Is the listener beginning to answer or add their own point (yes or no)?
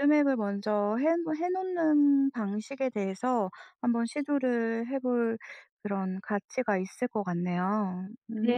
yes